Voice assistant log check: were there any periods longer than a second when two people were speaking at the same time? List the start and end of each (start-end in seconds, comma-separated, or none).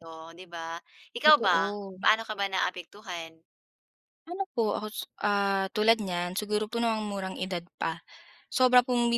none